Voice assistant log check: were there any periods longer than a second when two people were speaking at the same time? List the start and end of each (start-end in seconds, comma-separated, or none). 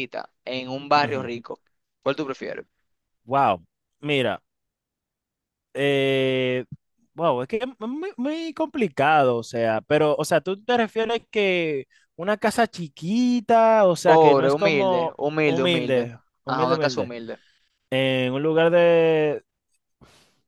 14.0-17.1